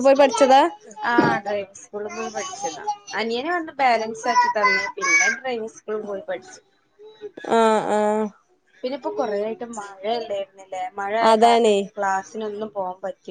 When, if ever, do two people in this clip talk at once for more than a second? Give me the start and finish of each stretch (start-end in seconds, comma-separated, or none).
none